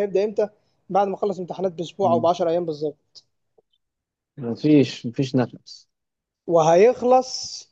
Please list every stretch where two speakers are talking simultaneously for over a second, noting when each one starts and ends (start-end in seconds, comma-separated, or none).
none